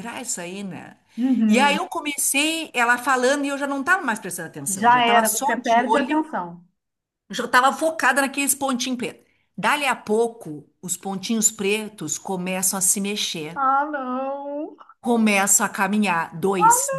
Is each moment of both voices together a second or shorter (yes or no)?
no